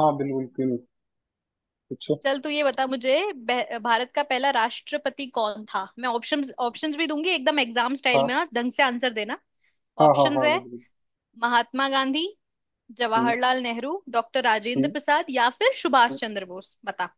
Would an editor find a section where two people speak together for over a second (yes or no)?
no